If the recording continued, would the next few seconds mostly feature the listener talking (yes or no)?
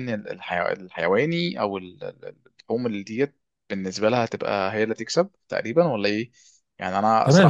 yes